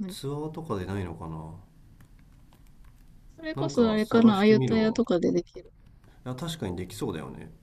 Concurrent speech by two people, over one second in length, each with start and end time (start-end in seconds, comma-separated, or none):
3.5-5.0